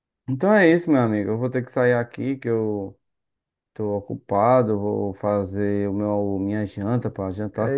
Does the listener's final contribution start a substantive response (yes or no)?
yes